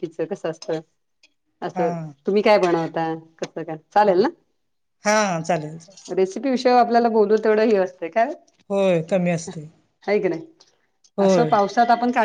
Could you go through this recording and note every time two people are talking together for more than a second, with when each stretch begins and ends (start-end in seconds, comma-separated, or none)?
none